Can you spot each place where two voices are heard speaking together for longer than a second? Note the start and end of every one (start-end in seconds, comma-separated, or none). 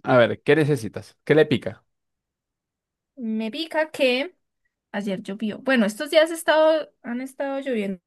none